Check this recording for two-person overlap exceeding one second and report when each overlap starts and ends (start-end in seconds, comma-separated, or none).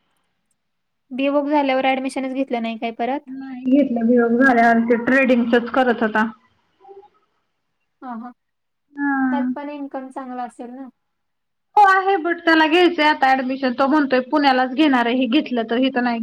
none